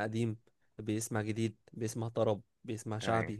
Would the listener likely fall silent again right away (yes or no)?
yes